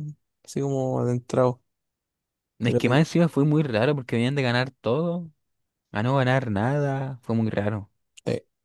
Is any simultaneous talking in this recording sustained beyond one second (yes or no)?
no